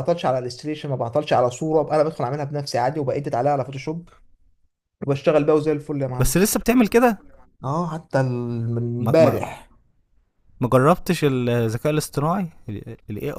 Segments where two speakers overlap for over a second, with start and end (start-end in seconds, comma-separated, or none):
none